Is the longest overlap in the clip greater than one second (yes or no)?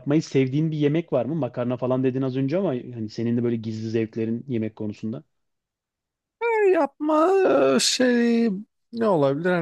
no